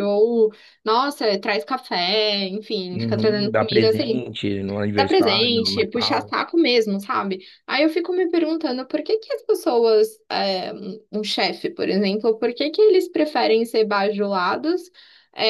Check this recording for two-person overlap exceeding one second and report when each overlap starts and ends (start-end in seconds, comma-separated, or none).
2.9-4.2, 5.0-6.3